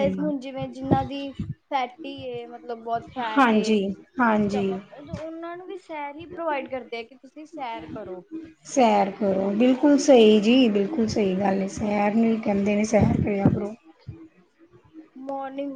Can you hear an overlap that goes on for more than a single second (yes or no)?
no